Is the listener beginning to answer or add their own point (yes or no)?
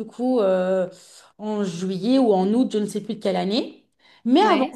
no